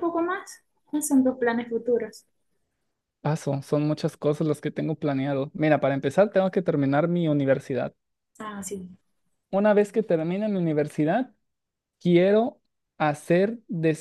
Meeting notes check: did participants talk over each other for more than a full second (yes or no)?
no